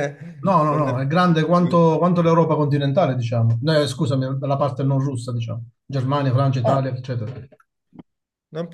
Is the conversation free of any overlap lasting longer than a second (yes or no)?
no